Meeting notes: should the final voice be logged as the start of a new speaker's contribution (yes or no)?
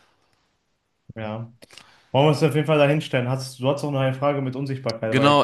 yes